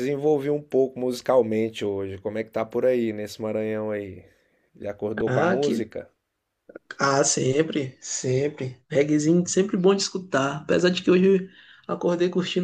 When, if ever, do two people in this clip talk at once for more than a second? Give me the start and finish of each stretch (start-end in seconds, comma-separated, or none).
none